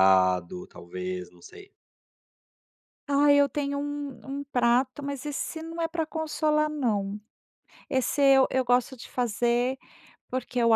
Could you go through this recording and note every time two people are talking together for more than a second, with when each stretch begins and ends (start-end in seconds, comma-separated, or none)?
none